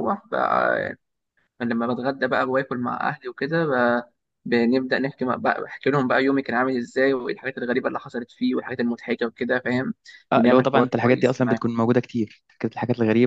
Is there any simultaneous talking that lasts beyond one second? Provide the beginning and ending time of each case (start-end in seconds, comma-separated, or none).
10.3-11.6